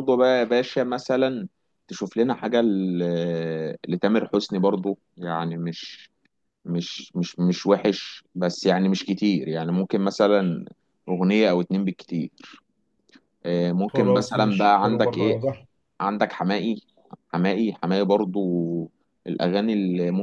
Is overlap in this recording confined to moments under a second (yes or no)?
no